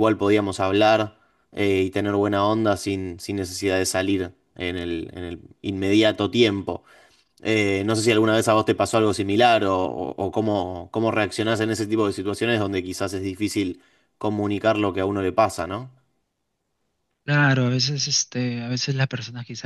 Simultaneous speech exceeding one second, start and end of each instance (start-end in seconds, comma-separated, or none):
none